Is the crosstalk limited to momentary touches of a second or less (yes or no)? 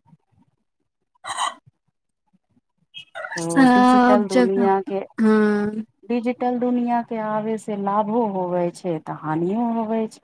no